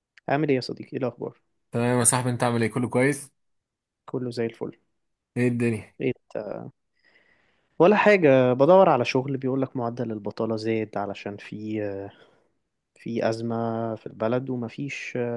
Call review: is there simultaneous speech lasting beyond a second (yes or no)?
no